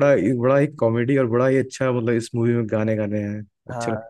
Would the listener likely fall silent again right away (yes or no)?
no